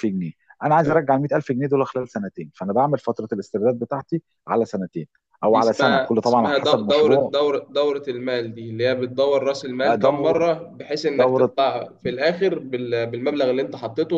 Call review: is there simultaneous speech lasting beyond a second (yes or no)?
yes